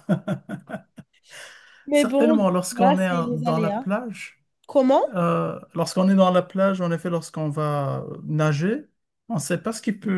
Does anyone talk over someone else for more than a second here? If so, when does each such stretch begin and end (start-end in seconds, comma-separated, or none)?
1.9-3.9